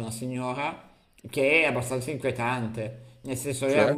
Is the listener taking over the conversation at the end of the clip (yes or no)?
no